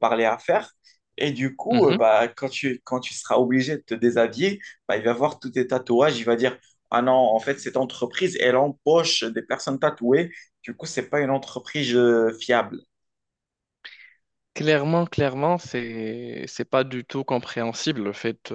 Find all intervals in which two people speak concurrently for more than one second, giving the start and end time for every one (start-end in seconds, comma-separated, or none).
none